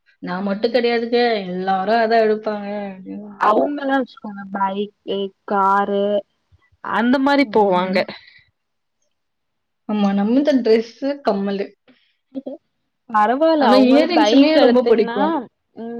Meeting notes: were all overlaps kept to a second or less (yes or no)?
no